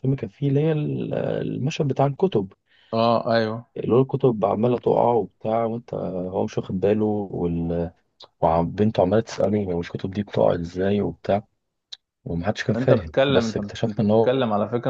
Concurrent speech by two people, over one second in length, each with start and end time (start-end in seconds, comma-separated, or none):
12.8-14.3